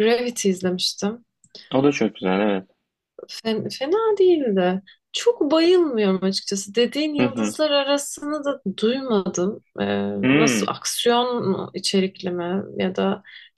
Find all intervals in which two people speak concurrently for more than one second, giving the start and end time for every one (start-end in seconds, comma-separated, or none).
none